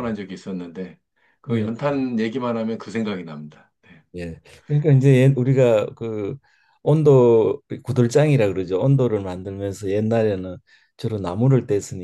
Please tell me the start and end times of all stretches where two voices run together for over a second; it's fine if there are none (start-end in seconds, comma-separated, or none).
none